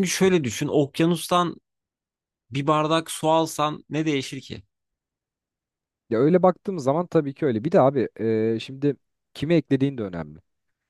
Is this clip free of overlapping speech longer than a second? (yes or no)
yes